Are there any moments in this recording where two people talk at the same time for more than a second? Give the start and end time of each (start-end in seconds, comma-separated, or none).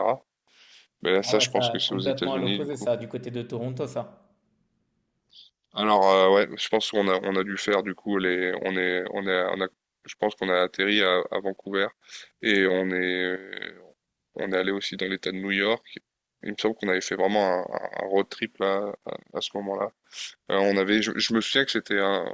1.2-2.9